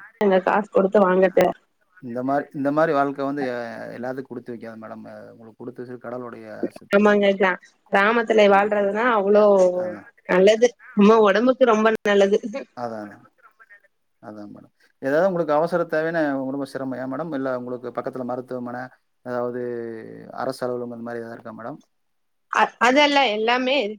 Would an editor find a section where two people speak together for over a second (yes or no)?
no